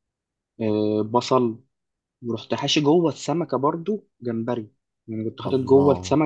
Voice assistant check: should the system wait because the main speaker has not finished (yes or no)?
yes